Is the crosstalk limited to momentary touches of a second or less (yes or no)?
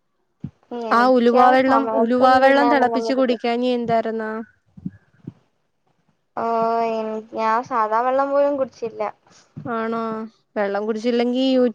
no